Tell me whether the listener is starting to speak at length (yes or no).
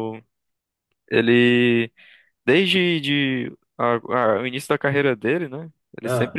no